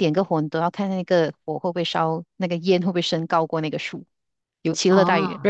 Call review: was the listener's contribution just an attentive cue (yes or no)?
yes